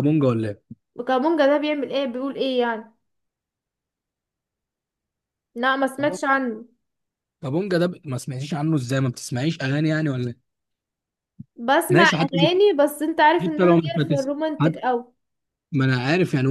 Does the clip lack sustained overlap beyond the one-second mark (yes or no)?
no